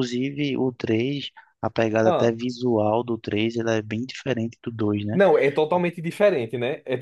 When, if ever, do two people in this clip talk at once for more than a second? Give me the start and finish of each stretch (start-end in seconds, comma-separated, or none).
none